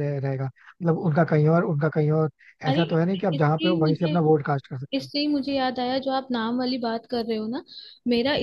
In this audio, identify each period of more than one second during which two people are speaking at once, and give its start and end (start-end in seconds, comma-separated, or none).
2.7-4.2